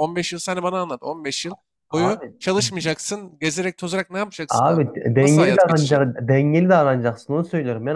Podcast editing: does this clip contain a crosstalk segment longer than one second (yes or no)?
yes